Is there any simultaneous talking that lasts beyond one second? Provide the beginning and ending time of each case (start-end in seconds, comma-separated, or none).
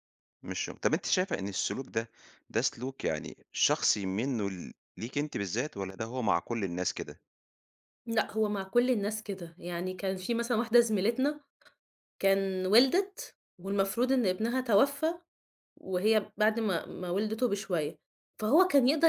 none